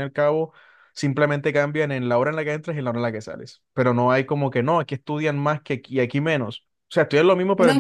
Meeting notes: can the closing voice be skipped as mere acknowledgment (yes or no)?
no